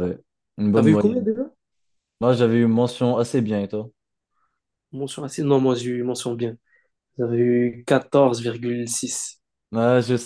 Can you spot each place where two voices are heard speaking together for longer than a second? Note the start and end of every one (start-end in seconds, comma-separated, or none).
none